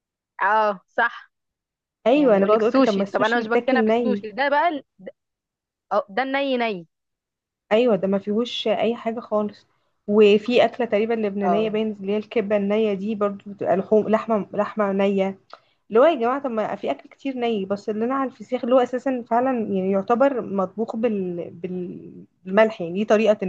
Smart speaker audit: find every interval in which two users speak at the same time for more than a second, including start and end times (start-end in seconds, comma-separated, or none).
2.1-4.2